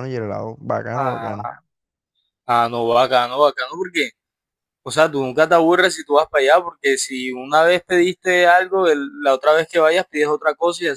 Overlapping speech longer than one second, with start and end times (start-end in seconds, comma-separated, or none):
none